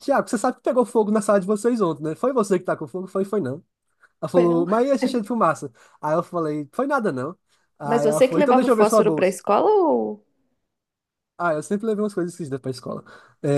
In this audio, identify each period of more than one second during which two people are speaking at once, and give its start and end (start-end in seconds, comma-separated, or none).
7.8-9.4